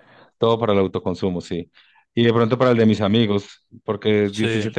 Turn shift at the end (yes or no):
no